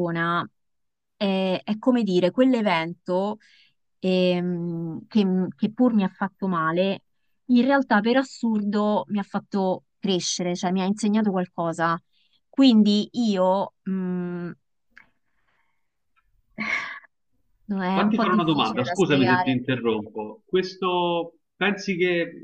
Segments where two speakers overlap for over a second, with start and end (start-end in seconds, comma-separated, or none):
17.9-19.6